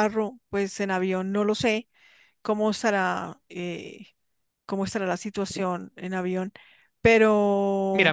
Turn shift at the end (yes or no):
yes